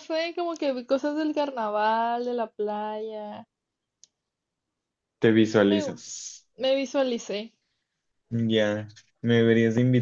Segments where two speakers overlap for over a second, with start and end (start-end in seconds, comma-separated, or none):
none